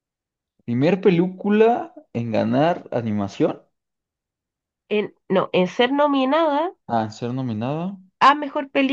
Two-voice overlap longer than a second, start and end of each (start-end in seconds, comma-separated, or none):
none